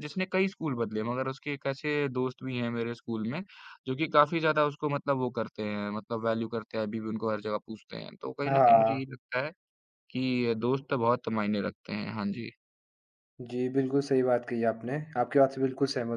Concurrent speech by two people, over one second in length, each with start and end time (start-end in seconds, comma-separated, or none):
none